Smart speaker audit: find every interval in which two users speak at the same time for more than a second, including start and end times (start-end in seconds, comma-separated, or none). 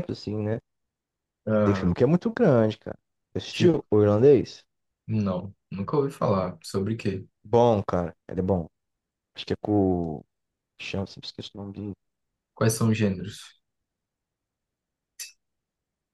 none